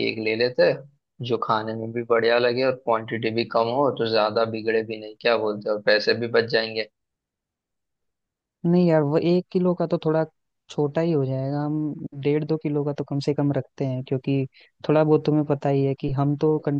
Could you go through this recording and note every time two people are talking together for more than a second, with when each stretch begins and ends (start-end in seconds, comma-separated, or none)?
none